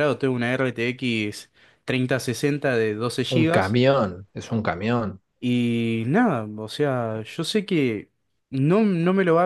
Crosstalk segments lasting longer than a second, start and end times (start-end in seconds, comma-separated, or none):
none